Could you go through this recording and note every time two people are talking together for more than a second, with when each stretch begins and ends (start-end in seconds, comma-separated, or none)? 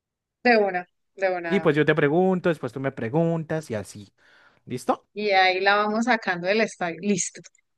none